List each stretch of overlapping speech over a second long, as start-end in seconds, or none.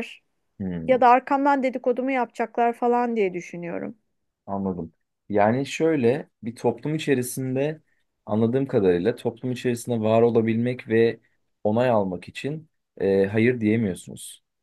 none